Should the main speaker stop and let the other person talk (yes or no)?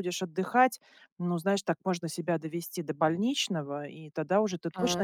no